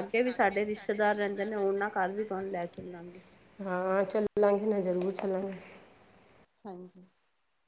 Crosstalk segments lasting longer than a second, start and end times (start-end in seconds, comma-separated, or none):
none